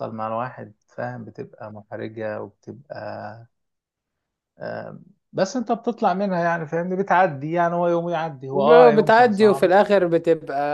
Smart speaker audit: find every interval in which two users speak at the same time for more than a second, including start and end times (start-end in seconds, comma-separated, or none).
8.5-9.7